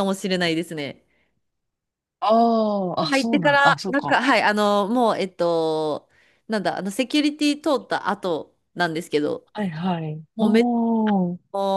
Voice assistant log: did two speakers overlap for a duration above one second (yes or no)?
yes